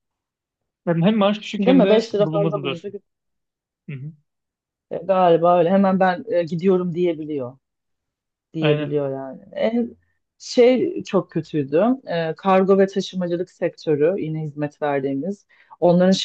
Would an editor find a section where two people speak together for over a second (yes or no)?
yes